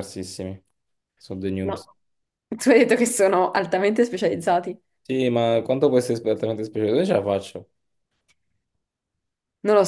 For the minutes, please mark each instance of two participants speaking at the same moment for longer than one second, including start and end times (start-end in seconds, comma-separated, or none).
none